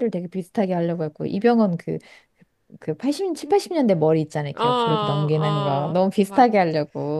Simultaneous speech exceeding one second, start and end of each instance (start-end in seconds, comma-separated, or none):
4.5-6.5